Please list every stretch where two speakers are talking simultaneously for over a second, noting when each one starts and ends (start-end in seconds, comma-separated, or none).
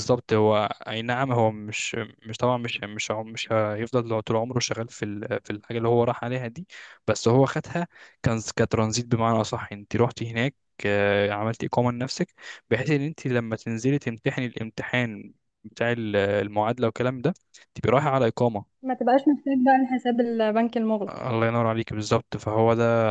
none